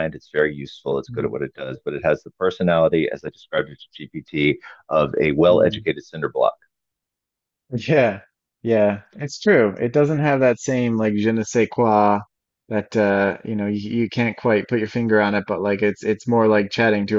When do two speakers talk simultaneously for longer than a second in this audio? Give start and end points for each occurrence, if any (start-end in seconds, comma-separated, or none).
none